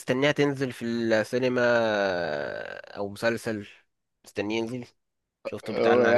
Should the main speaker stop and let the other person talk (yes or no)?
yes